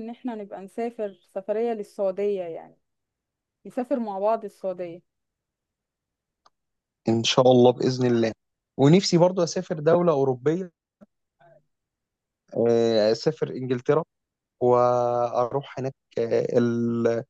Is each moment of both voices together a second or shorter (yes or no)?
yes